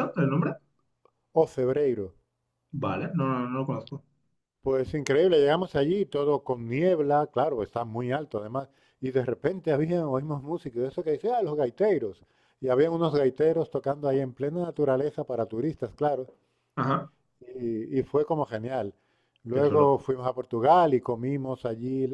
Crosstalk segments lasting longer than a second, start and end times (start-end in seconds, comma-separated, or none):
none